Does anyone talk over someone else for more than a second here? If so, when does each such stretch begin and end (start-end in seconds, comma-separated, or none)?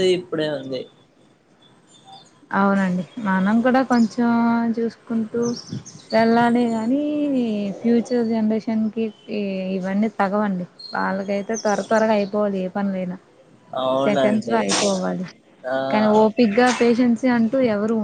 none